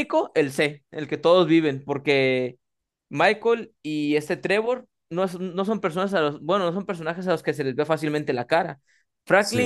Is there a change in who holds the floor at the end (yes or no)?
no